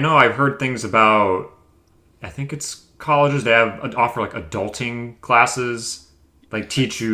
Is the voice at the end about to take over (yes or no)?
no